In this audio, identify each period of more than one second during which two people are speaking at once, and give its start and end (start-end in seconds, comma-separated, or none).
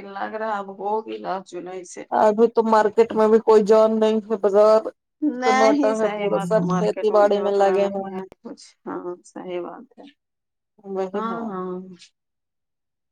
5.4-8.3